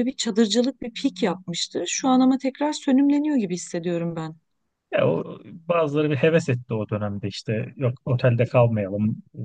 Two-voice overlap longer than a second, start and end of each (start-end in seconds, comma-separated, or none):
none